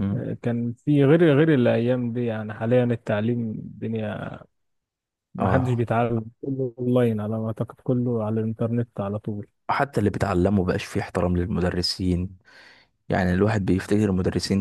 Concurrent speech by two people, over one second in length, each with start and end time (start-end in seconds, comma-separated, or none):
none